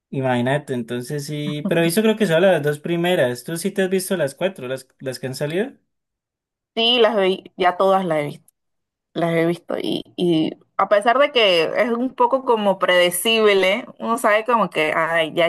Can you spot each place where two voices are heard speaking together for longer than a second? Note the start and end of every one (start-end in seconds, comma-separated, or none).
none